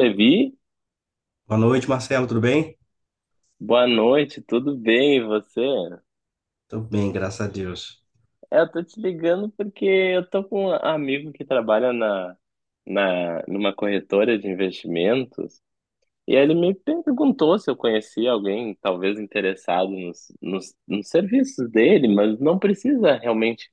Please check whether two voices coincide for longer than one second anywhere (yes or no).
no